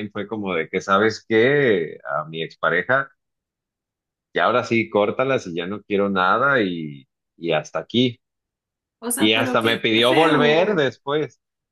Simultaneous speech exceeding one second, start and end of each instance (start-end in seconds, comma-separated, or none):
9.2-10.9